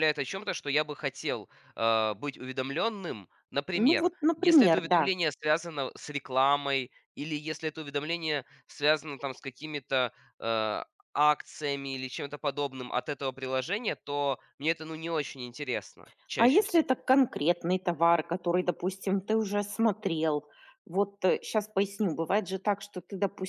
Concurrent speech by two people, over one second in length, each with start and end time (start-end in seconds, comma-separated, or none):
3.7-5.1